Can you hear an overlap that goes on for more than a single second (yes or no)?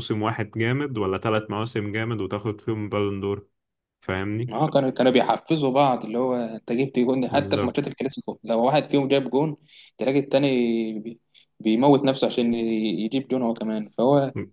no